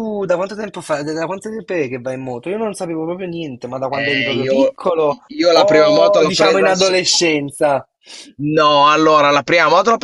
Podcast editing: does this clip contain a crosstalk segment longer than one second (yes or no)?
yes